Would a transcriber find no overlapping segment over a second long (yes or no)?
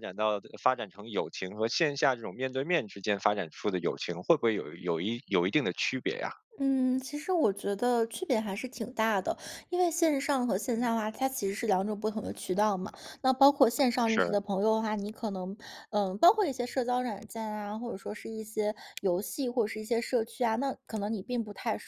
yes